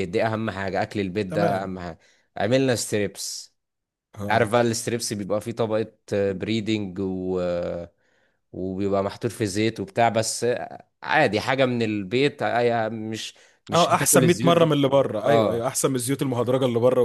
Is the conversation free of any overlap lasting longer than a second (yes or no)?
no